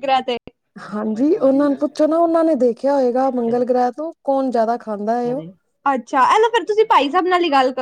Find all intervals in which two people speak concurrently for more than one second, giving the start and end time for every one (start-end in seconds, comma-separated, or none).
0.9-2.3